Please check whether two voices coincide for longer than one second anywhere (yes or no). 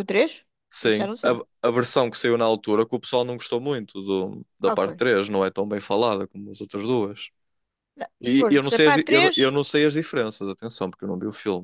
yes